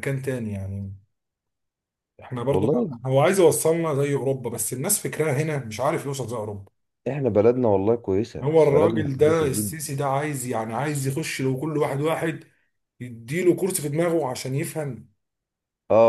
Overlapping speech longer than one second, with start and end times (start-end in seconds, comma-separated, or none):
8.4-9.8